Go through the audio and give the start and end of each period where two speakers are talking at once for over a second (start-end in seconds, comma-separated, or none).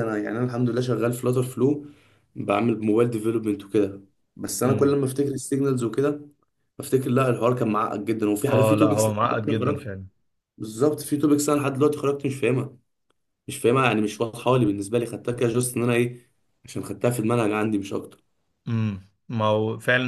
8.5-9.9